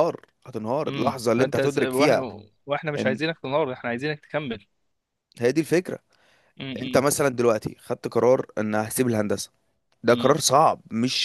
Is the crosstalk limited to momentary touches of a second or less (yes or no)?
no